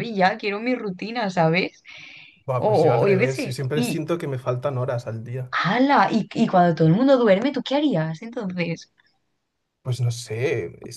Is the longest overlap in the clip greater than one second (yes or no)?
yes